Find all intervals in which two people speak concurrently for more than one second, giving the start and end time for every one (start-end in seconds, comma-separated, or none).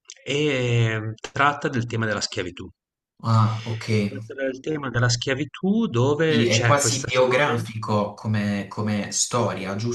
6.2-7.6